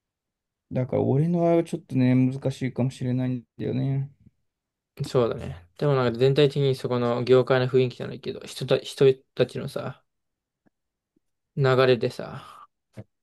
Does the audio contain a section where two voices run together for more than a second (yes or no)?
no